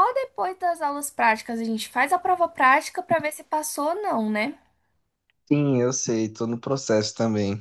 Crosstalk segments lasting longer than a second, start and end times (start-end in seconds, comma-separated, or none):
none